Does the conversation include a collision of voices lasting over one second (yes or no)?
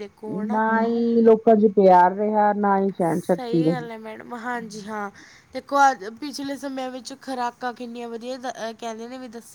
no